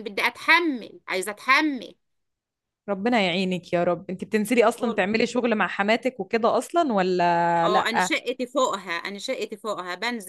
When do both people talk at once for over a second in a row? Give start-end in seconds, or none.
none